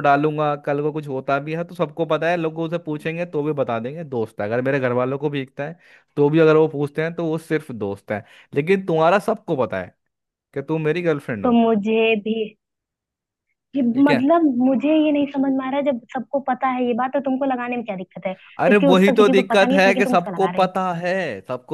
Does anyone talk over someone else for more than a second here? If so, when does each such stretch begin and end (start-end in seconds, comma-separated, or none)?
18.6-20.7